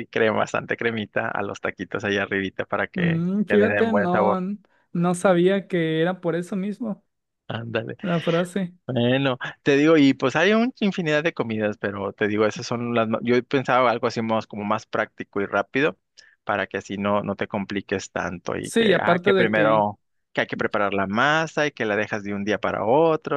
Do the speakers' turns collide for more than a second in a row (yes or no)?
yes